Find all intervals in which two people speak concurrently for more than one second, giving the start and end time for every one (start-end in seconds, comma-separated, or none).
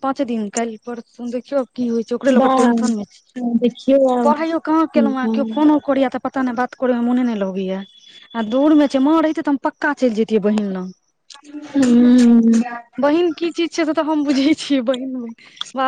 none